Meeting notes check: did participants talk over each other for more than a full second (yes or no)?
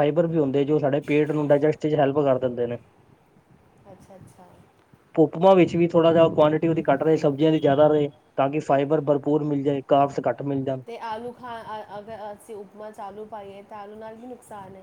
no